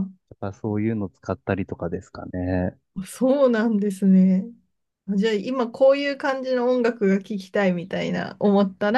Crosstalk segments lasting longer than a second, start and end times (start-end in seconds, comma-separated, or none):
none